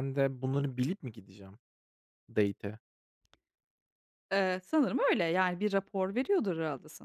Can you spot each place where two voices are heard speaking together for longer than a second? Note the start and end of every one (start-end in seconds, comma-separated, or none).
none